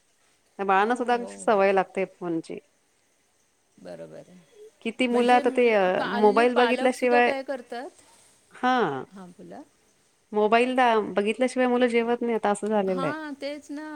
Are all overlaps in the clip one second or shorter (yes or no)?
no